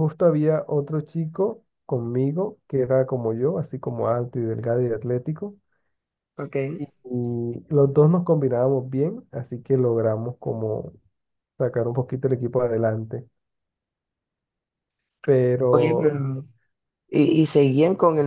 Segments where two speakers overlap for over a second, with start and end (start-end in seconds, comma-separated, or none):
none